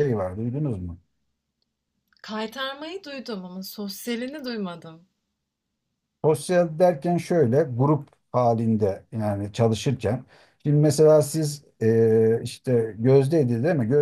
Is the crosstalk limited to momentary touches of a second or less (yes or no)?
yes